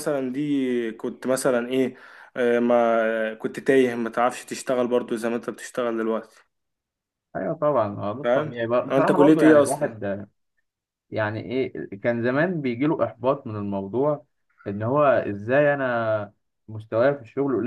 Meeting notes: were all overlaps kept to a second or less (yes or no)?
no